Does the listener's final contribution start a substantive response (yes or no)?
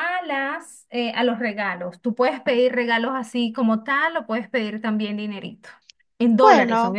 no